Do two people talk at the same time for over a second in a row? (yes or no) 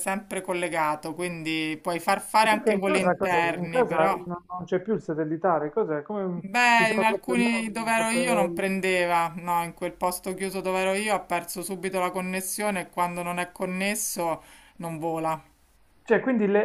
yes